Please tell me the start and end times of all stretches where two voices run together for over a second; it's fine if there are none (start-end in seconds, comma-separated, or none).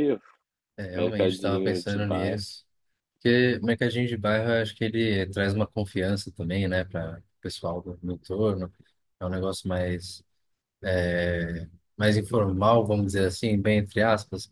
0.9-2.4